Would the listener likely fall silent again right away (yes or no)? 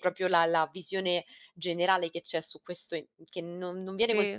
yes